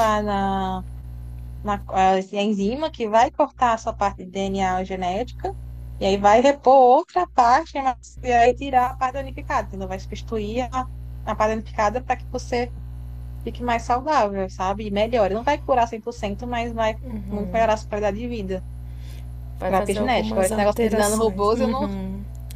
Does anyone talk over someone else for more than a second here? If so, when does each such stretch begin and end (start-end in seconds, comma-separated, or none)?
19.6-21.9